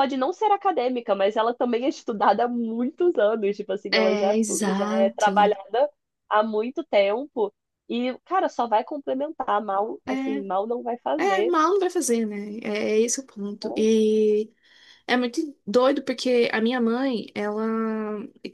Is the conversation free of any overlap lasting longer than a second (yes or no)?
no